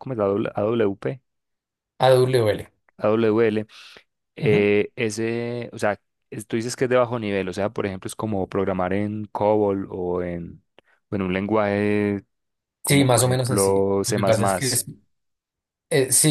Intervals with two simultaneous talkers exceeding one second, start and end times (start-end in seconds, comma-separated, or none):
12.8-14.2